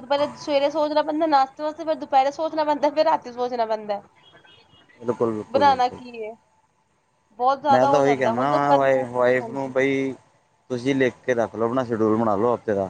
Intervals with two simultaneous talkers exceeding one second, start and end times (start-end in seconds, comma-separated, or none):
7.7-9.9